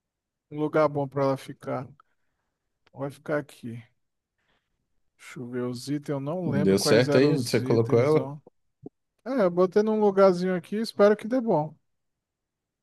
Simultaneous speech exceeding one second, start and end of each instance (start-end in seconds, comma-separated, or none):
6.5-8.3